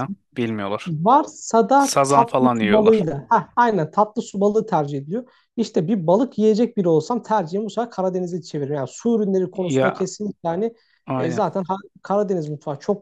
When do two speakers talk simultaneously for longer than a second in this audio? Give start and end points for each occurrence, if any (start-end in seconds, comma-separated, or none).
1.8-3.1